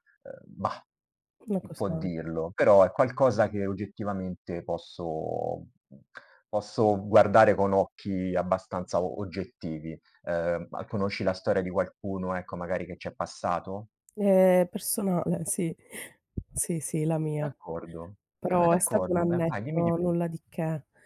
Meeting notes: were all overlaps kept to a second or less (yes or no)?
no